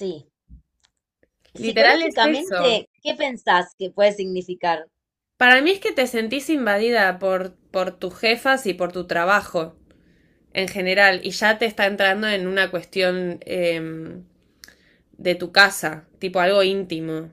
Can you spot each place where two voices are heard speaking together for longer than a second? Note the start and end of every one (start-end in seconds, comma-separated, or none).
1.6-2.8